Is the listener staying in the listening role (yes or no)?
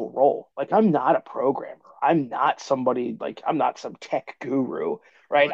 no